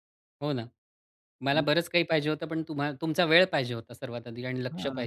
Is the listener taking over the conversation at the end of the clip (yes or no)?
yes